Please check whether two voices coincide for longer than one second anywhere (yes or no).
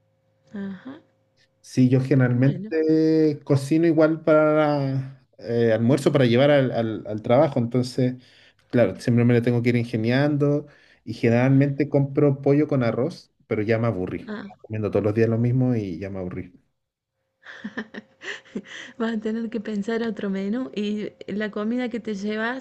no